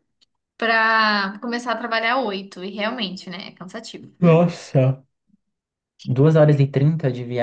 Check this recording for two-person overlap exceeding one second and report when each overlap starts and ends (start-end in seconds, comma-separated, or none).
none